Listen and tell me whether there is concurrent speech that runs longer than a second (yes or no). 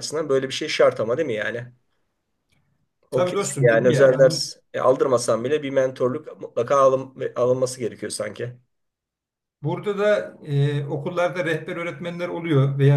yes